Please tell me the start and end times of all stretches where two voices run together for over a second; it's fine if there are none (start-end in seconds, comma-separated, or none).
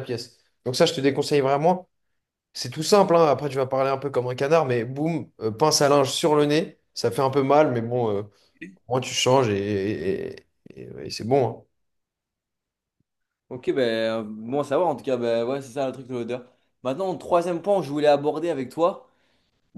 none